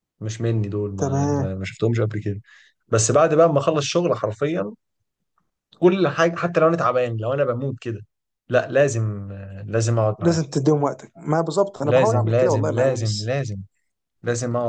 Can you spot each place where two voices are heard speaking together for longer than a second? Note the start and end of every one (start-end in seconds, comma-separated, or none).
11.8-13.3